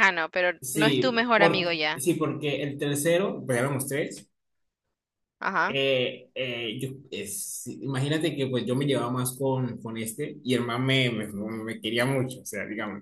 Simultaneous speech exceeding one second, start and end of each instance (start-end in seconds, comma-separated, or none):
0.6-2.0